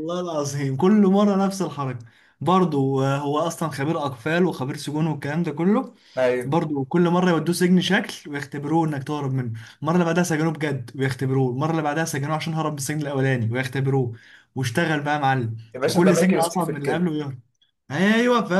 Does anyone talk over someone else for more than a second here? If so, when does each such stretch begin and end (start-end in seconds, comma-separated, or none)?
15.7-17.1